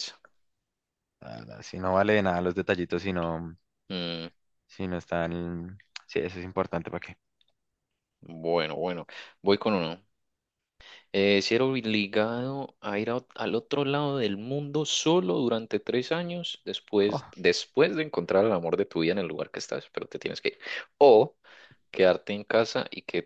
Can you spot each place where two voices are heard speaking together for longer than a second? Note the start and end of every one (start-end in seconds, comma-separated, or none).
none